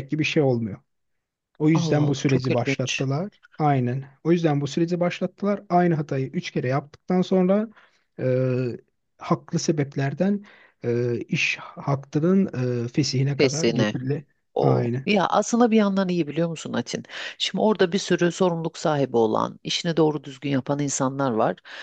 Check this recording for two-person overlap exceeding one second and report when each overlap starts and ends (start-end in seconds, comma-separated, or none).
1.7-3.0